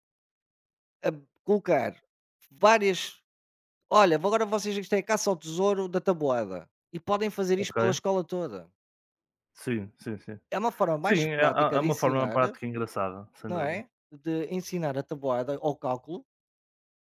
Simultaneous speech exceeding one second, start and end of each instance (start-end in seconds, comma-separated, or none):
11.0-12.4